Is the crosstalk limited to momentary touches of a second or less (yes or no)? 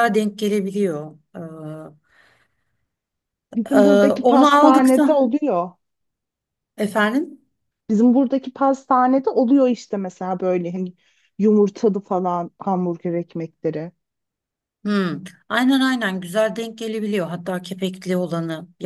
no